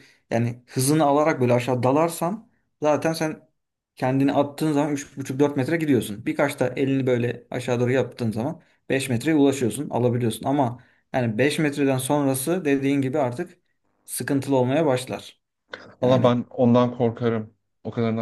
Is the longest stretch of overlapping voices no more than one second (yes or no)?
yes